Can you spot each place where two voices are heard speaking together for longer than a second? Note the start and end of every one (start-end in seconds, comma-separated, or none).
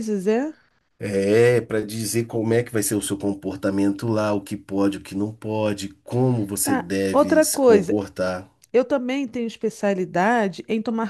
6.6-8.0